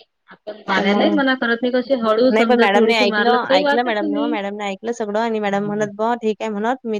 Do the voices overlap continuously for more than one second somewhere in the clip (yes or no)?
yes